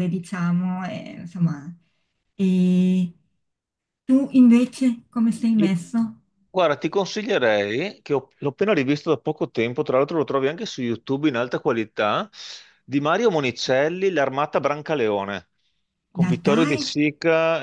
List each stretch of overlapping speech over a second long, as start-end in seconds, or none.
none